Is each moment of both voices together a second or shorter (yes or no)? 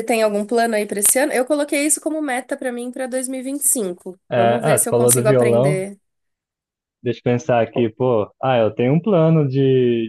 no